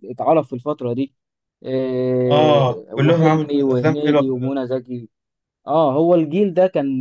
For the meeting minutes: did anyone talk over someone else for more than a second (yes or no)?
yes